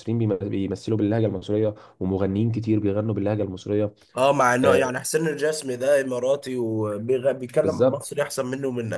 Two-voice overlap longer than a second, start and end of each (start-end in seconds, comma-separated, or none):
none